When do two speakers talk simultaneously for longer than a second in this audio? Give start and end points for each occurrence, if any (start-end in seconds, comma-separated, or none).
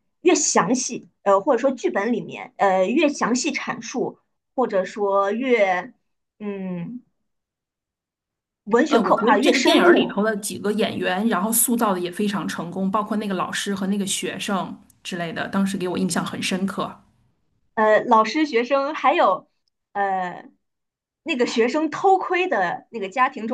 8.9-10.2